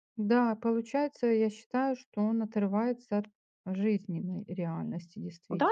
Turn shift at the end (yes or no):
yes